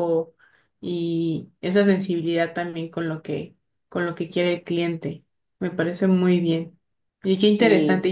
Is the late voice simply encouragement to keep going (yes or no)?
yes